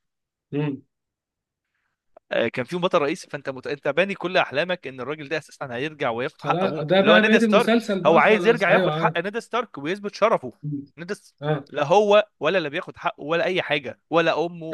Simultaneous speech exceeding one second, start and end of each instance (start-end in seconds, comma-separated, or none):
6.4-9.1